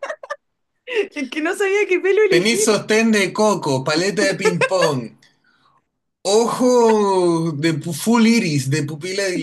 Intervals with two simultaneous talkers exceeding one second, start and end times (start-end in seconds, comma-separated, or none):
none